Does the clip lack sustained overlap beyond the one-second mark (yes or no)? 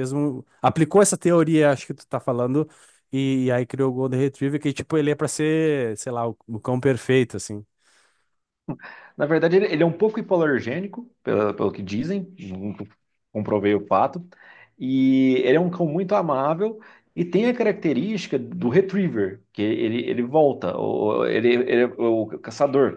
yes